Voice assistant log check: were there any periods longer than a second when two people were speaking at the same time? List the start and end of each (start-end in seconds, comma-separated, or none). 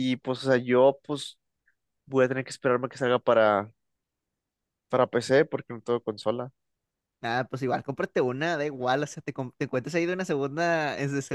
none